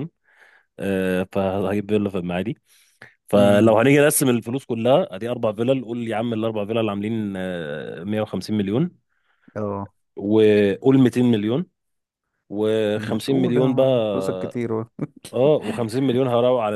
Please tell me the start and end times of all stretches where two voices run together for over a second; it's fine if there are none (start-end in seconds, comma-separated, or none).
13.0-14.6